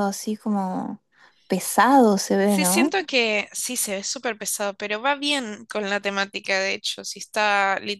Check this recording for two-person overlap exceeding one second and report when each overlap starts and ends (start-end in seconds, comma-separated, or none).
none